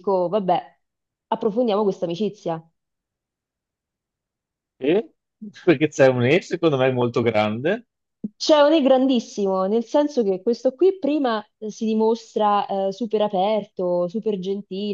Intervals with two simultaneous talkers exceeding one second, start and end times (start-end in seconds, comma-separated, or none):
none